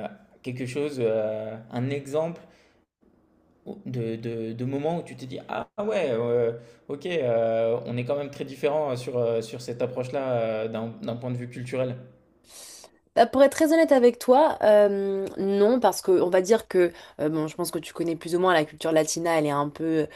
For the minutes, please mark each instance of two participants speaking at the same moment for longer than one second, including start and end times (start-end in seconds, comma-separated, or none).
none